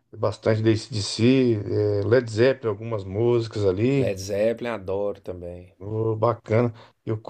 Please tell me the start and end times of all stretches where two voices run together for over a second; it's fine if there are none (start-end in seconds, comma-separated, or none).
none